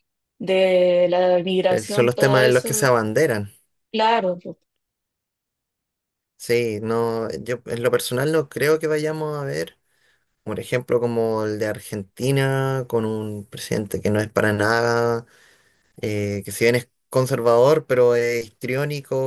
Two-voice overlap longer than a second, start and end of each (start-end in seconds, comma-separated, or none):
1.7-2.9